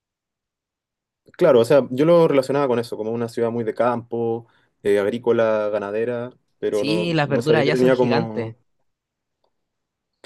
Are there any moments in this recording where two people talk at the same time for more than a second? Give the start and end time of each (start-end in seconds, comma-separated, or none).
6.7-8.6